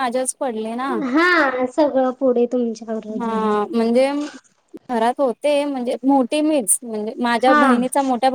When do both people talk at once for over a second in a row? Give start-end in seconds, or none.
none